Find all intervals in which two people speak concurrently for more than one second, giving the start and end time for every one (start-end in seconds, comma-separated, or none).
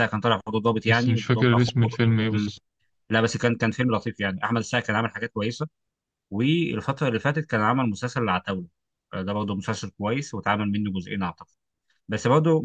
0.9-2.5